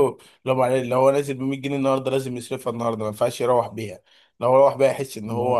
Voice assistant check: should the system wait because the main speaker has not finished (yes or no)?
yes